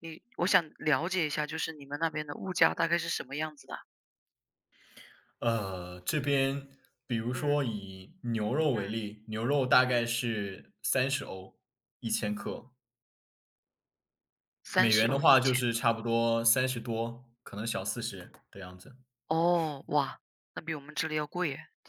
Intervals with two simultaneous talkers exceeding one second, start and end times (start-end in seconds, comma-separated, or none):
14.8-15.9